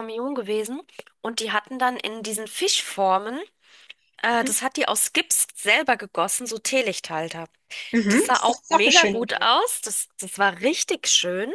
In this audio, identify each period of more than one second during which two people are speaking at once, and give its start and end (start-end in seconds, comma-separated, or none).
8.1-9.5